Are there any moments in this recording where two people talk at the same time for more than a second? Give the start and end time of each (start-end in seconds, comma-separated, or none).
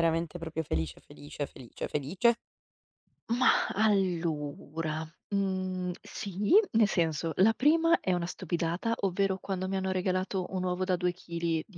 none